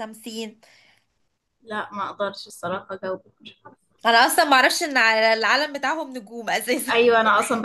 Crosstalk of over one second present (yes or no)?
no